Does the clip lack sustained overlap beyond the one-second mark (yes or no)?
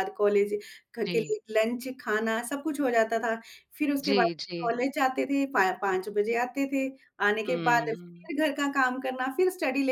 yes